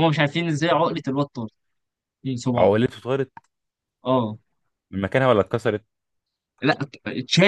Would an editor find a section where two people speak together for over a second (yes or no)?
no